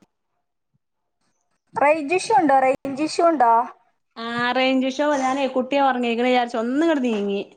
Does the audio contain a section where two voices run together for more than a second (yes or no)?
no